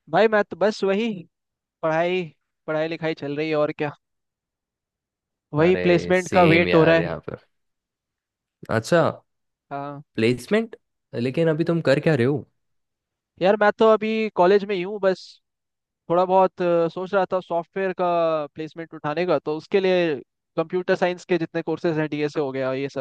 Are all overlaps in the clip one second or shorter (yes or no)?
no